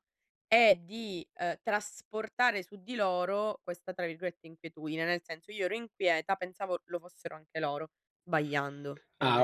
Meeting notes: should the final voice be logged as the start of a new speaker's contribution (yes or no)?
yes